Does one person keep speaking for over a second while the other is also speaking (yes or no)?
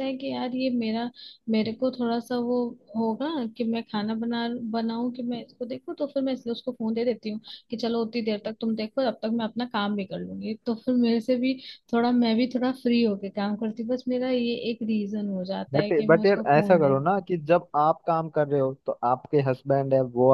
yes